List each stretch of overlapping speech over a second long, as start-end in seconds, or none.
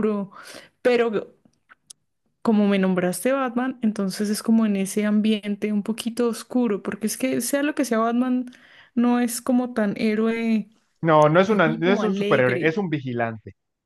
11.5-12.8